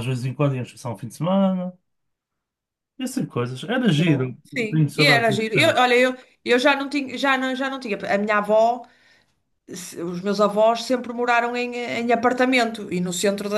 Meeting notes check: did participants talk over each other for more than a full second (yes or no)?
yes